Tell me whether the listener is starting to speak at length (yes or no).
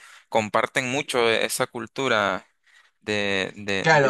yes